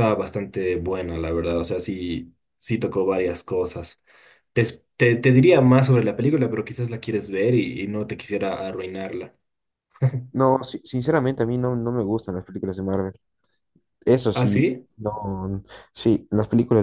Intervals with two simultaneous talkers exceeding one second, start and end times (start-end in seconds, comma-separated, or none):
none